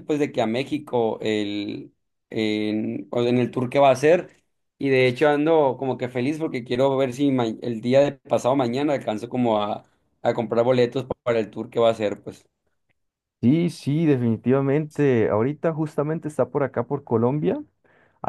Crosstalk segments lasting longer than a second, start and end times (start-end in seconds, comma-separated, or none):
none